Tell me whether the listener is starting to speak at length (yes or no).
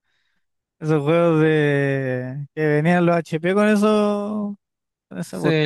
yes